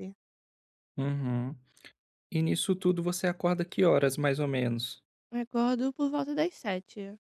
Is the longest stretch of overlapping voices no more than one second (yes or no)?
yes